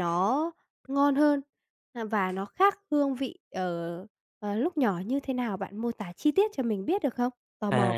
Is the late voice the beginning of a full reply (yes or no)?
yes